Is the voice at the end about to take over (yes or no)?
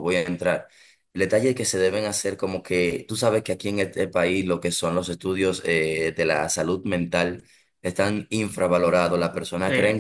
no